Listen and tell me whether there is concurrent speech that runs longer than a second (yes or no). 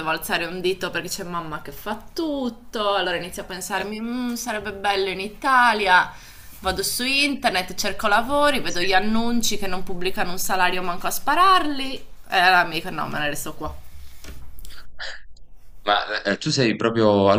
no